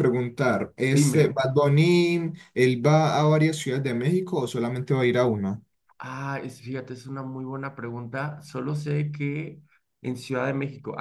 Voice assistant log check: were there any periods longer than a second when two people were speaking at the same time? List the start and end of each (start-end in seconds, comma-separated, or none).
none